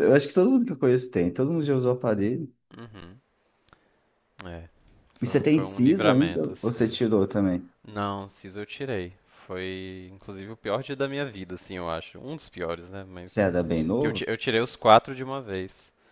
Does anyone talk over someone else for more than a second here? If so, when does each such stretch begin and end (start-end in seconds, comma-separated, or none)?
5.2-6.9